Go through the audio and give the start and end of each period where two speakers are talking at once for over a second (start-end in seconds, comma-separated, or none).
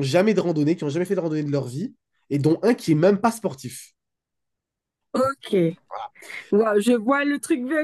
none